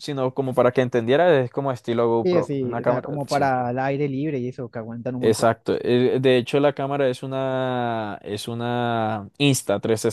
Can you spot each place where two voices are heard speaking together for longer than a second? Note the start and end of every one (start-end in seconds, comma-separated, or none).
2.2-3.5